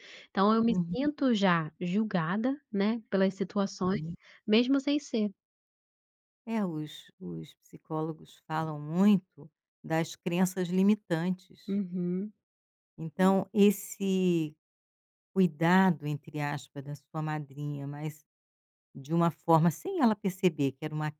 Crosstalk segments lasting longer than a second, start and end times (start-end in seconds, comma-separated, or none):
none